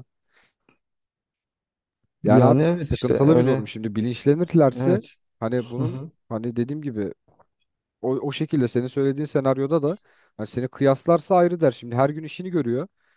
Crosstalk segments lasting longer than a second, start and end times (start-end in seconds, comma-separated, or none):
2.2-3.7